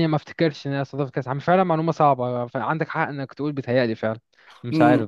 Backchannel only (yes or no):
no